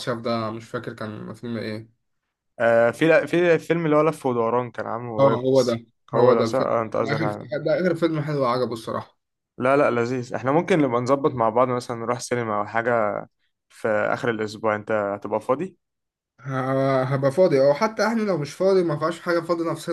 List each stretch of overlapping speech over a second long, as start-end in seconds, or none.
5.2-7.3